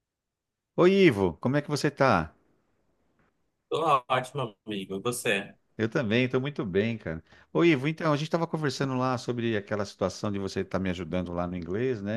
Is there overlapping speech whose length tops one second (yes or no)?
no